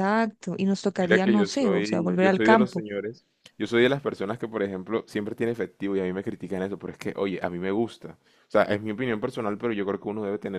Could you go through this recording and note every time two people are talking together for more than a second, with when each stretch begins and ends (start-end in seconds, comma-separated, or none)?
0.9-2.8